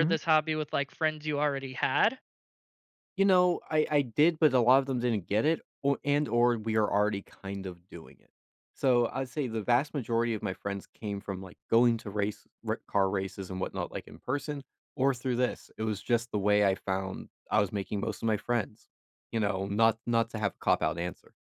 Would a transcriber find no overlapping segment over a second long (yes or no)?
yes